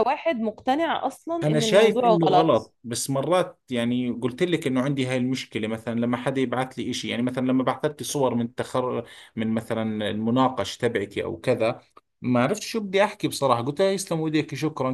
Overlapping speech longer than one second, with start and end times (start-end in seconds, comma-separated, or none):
1.4-2.7